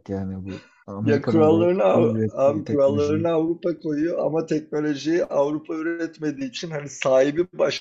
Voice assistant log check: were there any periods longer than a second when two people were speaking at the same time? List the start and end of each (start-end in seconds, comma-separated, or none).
1.0-3.3